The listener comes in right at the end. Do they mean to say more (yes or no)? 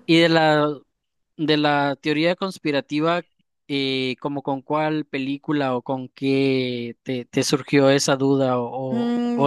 yes